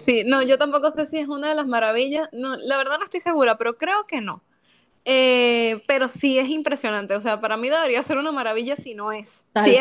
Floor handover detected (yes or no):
yes